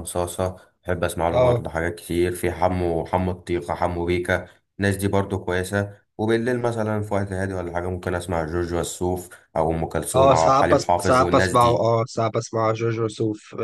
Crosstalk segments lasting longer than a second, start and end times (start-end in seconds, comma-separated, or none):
10.2-11.9